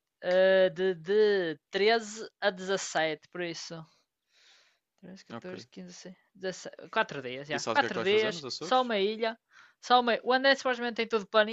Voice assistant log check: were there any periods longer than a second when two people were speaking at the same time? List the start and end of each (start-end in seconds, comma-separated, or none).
7.5-8.9